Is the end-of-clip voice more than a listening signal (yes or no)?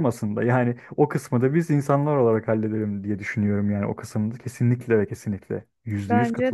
yes